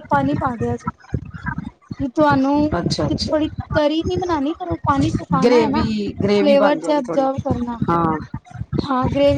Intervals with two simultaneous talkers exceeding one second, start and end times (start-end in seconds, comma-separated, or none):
5.4-7.3